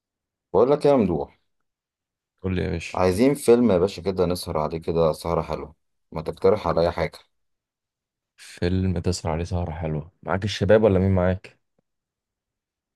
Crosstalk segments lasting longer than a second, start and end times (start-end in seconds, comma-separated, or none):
none